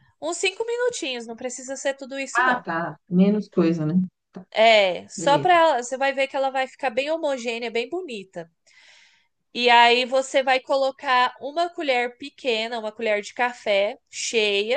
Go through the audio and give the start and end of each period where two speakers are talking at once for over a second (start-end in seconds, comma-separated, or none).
none